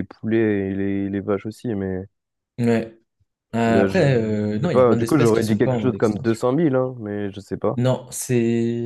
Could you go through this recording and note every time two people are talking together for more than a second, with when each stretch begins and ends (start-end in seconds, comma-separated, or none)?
3.7-6.4